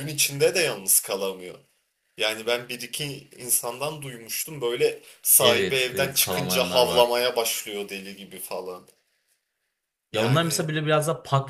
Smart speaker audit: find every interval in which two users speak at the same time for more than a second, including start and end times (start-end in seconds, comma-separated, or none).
5.4-7.1